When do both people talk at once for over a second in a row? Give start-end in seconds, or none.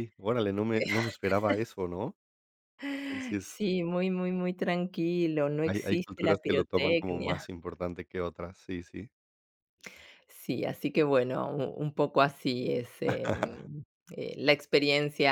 5.7-7.5